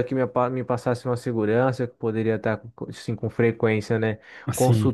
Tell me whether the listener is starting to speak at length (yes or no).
no